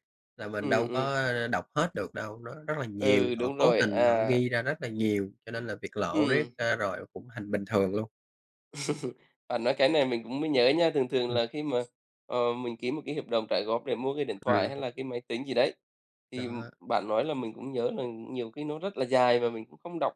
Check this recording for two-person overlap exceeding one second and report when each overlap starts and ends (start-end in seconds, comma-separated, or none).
3.0-4.4